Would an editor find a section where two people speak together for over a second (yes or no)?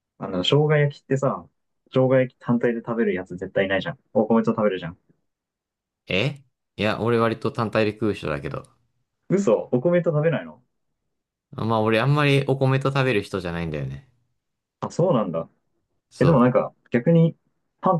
no